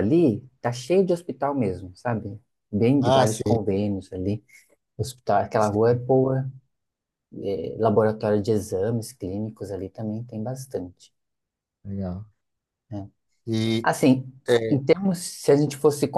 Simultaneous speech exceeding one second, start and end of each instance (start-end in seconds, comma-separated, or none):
none